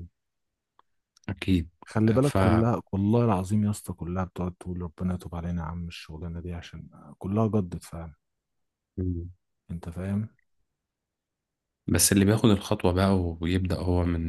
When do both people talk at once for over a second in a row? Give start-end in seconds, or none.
none